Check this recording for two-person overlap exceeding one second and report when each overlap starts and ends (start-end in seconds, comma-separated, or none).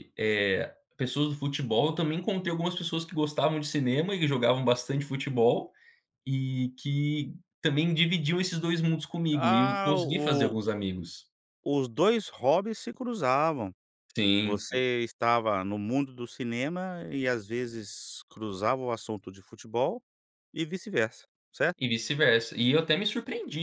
9.3-10.5